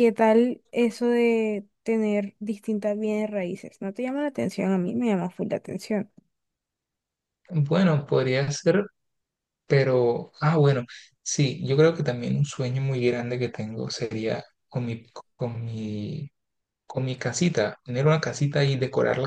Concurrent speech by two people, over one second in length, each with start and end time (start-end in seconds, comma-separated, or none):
none